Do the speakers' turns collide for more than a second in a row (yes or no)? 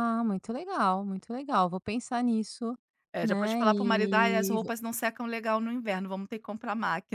yes